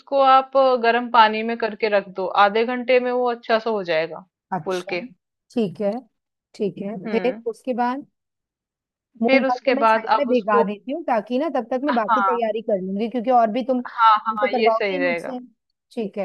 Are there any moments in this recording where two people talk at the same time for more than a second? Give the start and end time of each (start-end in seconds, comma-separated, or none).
9.2-10.7, 13.9-15.3